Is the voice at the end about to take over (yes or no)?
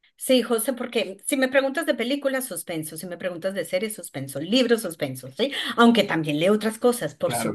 no